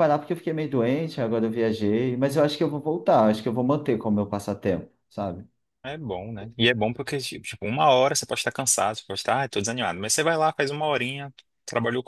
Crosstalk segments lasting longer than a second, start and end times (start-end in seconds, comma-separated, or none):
none